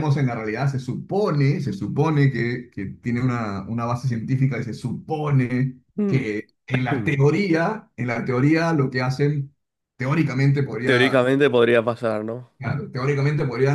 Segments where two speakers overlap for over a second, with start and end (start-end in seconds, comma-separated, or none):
none